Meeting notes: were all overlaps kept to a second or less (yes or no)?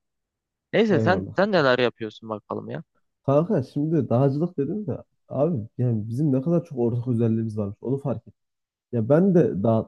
yes